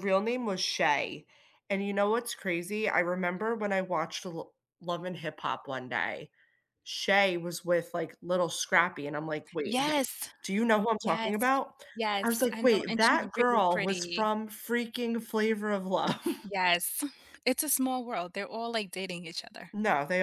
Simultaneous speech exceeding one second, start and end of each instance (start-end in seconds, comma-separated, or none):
12.2-14.3